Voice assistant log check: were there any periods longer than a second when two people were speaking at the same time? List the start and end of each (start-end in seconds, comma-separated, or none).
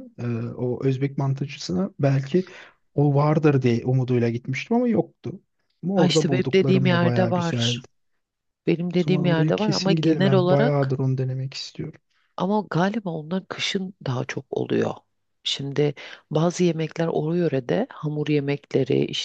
5.9-7.8, 9.0-11.0